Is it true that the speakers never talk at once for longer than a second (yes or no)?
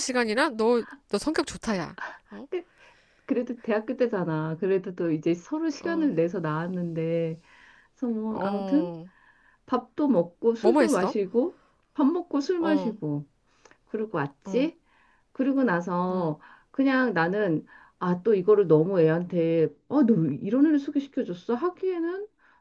yes